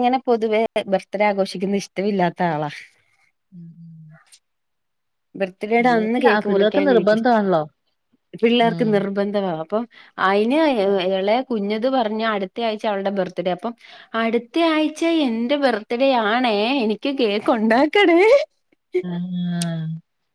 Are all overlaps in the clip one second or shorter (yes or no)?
no